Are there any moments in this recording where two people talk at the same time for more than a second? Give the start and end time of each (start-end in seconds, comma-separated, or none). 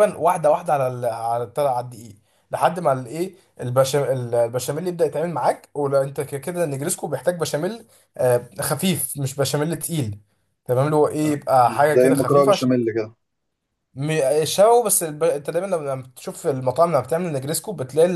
11.2-12.7